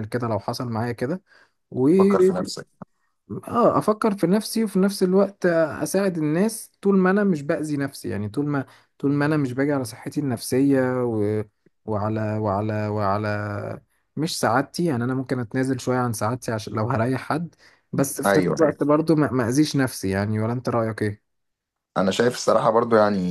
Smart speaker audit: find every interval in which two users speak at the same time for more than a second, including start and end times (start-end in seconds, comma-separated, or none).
none